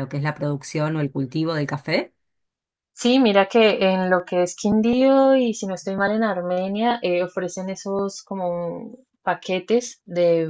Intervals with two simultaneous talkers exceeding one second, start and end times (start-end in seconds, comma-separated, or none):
none